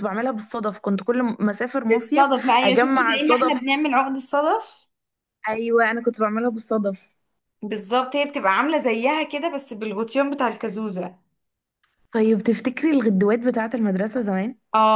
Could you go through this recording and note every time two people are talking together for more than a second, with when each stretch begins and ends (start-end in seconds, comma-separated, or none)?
1.9-3.5